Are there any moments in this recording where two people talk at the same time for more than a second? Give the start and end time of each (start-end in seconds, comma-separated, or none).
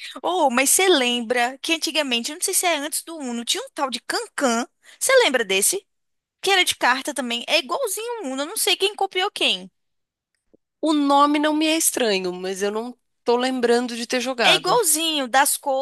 none